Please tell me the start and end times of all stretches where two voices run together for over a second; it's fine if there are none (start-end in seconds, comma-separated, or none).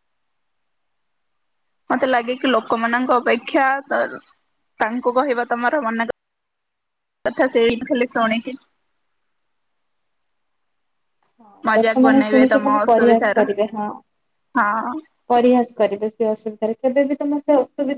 11.7-13.4